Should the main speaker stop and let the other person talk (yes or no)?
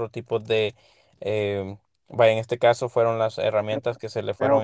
yes